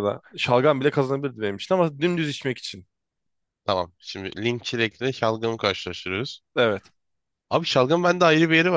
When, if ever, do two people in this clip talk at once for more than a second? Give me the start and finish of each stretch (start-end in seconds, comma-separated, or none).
none